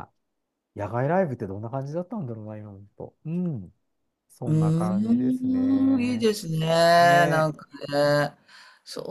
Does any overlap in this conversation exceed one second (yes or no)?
yes